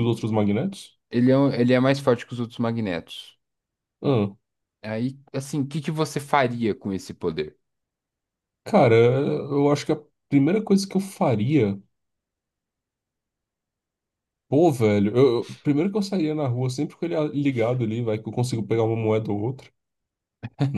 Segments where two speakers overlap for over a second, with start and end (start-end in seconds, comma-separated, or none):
none